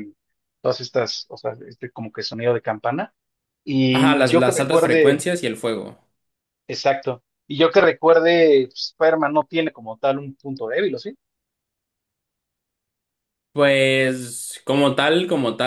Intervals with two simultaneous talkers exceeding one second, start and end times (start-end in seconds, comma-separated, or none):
3.9-5.2